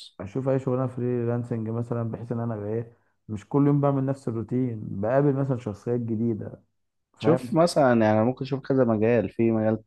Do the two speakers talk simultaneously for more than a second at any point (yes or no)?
no